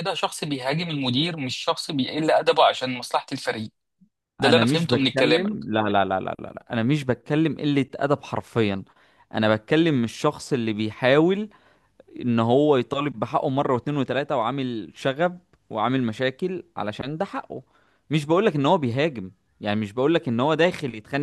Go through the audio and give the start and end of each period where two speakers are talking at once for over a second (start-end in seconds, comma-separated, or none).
4.4-5.7